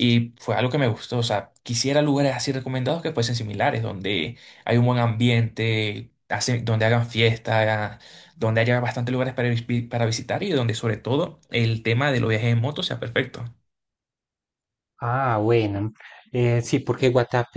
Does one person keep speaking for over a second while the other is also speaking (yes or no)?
no